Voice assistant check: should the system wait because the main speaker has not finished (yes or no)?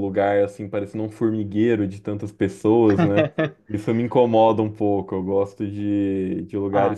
yes